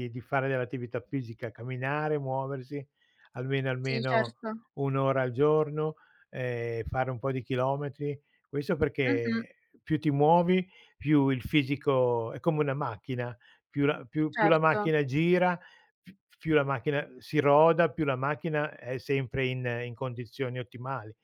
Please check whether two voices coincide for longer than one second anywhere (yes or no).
no